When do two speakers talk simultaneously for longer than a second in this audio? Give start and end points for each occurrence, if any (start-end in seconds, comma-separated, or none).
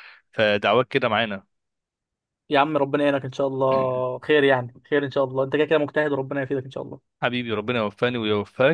none